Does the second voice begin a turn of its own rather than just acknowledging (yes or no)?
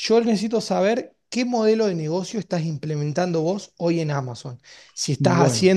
no